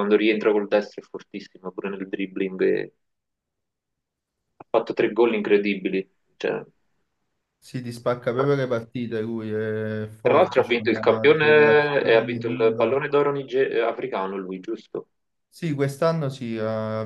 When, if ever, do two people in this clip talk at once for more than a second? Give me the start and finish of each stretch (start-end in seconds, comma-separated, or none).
10.2-13.0